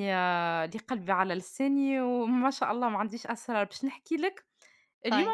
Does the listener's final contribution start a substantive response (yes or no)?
no